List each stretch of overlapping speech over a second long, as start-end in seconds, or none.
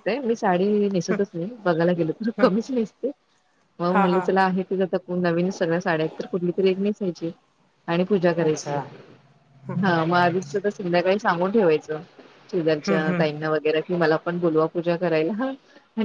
none